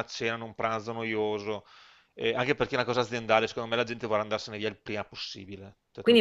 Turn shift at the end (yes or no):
yes